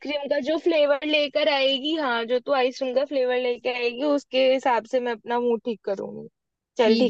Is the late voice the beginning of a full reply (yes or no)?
yes